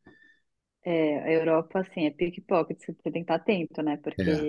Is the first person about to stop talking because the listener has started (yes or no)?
no